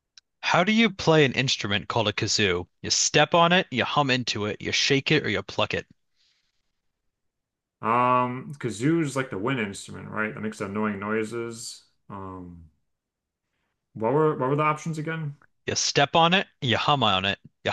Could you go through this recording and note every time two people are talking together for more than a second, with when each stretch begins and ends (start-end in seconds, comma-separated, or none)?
none